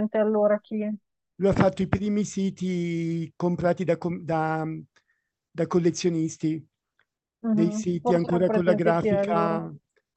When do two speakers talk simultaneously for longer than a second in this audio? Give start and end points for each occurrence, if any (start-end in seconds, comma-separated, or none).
7.5-9.5